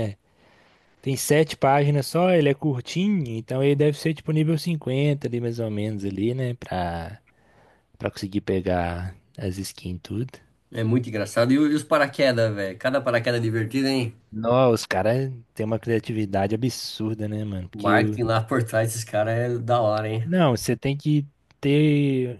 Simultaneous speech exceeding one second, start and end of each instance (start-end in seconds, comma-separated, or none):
none